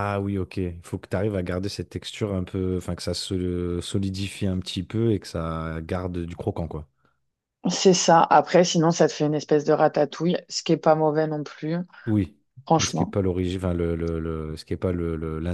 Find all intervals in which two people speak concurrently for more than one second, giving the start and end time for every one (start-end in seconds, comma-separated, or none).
none